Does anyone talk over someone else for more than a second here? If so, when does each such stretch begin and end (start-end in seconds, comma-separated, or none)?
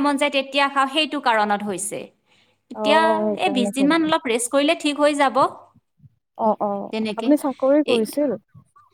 none